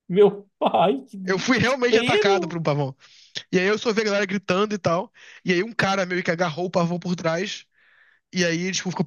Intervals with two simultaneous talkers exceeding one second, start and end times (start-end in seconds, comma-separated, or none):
1.3-2.6